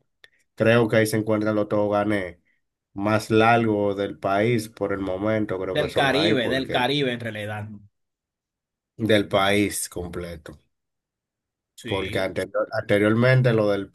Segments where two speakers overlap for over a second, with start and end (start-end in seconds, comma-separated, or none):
5.7-6.9